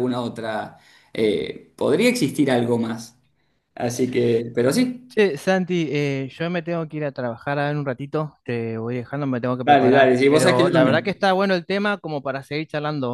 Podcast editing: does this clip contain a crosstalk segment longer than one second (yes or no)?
yes